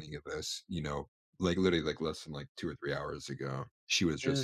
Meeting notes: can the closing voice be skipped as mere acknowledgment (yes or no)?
yes